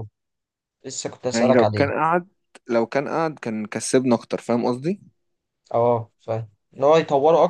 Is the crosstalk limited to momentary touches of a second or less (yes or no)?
yes